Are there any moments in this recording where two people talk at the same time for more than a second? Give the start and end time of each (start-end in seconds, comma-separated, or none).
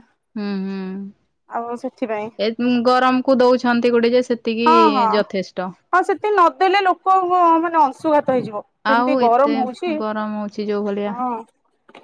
none